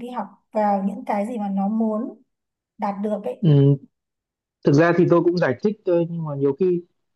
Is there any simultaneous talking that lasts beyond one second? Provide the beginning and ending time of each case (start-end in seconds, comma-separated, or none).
none